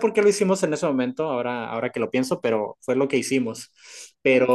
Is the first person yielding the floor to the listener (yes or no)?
no